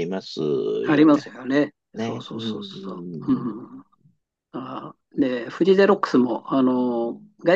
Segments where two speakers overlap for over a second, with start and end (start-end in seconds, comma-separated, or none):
1.9-3.7